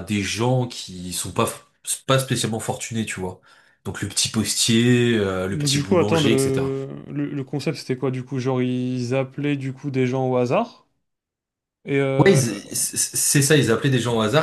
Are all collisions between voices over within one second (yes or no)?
no